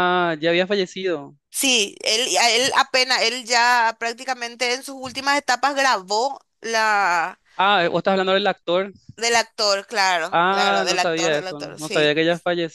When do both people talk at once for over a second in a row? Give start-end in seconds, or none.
10.4-12.2